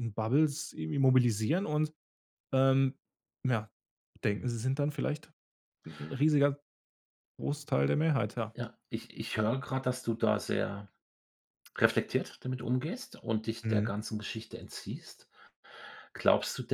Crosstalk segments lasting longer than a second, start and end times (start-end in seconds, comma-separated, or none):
none